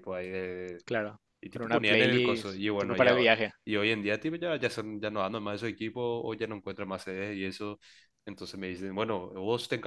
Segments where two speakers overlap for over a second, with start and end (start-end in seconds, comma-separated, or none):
1.4-3.5